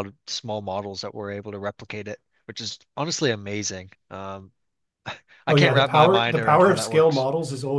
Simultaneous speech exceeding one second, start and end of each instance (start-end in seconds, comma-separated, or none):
5.5-7.3